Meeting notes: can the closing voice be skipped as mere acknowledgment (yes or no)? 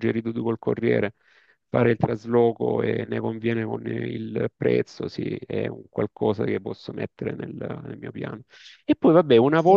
yes